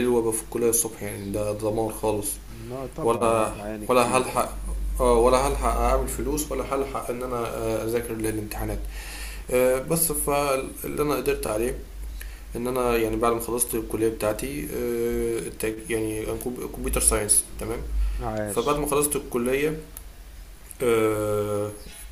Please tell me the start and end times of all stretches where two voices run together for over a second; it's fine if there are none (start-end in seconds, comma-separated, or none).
3.0-4.5